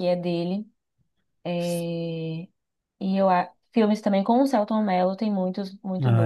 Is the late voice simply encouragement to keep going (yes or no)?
yes